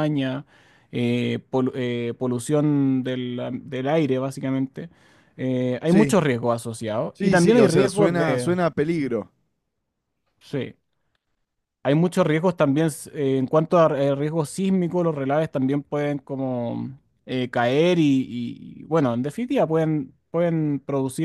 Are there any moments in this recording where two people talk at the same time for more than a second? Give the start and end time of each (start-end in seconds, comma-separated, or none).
7.1-8.5